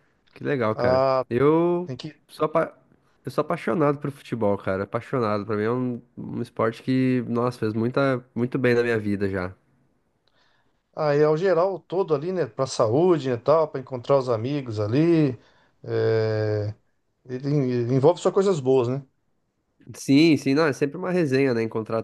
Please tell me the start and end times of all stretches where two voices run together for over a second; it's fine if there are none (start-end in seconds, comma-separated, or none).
none